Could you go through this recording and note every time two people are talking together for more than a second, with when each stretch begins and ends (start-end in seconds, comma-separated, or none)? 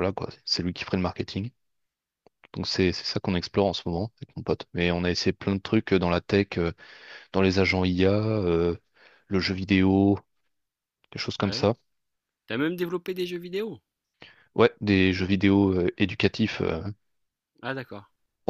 none